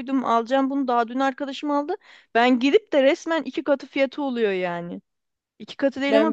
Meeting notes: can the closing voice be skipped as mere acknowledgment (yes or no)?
yes